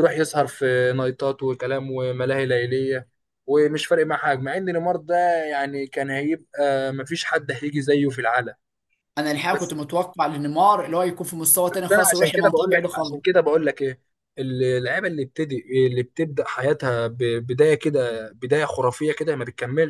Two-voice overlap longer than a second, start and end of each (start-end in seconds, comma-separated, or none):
11.7-13.2